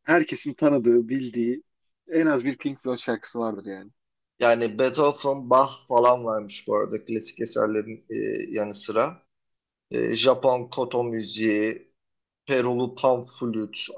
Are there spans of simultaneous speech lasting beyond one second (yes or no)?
no